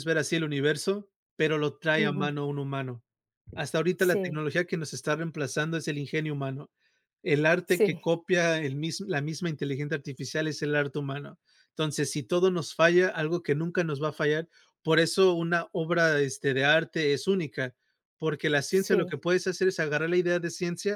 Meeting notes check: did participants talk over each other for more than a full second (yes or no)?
no